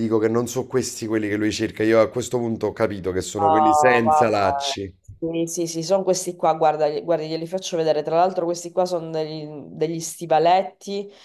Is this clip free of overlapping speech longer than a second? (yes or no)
no